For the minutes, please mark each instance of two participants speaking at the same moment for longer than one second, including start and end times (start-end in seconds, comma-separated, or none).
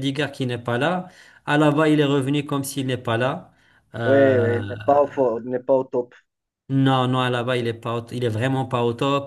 none